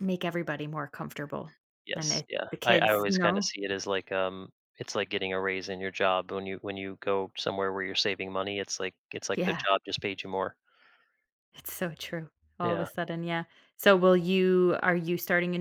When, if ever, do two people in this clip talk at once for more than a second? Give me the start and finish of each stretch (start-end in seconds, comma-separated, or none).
1.9-3.5